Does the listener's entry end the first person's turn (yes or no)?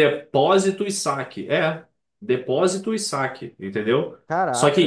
no